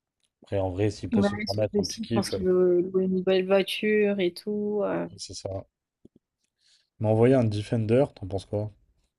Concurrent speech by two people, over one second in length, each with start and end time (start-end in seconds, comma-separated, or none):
1.1-2.4